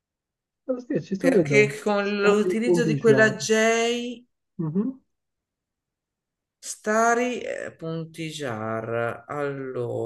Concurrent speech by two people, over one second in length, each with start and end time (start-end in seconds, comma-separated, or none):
1.2-3.4